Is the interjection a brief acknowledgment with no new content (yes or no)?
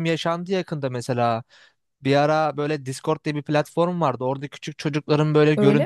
yes